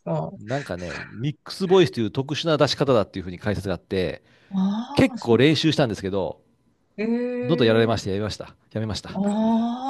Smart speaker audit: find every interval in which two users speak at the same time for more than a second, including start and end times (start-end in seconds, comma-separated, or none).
none